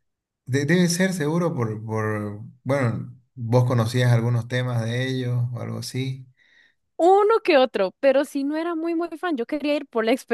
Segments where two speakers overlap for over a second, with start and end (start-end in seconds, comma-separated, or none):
none